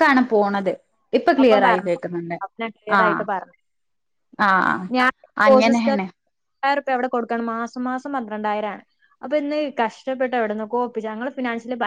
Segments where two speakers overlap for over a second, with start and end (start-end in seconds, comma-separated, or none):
none